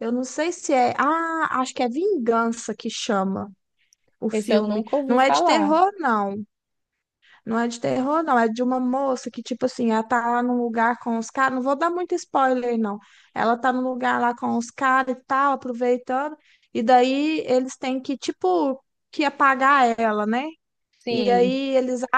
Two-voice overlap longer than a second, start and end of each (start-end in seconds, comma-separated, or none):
4.3-5.8